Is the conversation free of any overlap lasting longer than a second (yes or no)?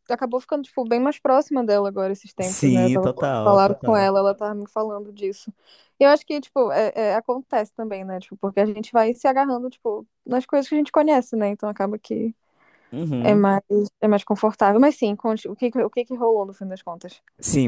no